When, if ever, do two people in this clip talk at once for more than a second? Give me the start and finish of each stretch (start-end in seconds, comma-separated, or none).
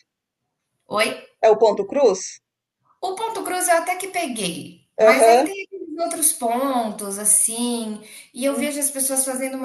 none